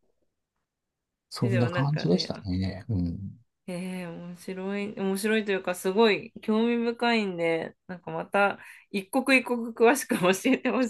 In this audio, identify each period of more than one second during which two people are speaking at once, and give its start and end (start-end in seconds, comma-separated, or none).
1.4-2.6